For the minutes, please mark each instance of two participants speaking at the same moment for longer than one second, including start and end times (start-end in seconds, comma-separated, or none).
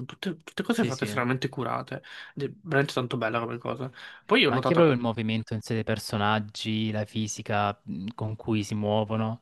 none